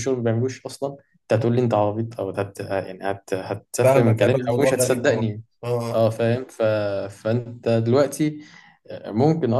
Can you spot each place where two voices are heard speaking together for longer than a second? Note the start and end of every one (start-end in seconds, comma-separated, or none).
3.8-5.3